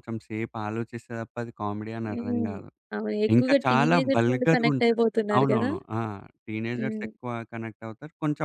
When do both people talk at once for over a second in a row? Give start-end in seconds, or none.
3.4-5.7